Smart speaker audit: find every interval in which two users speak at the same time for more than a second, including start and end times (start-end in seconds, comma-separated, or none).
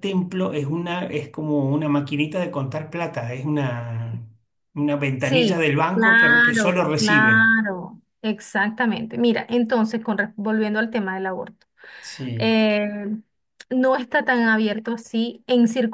5.2-7.5